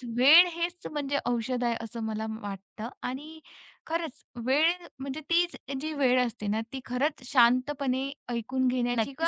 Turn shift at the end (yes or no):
yes